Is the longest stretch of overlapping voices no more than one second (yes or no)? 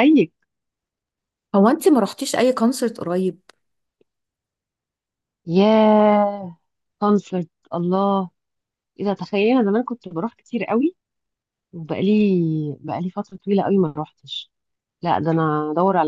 yes